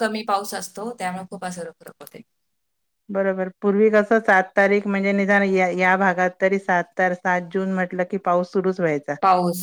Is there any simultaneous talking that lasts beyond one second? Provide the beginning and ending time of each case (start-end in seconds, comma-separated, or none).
none